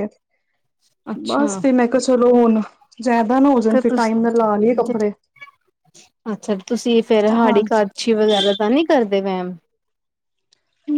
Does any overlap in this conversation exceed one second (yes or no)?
no